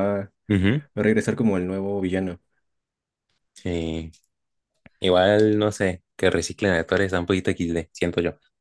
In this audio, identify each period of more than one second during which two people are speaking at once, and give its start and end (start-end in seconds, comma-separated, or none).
none